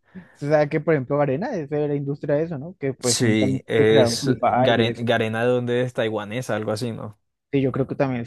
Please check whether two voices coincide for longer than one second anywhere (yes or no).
yes